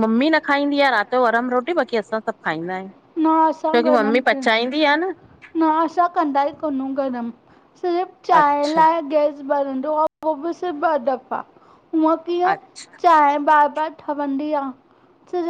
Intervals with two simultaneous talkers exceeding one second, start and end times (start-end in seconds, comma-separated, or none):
3.2-4.5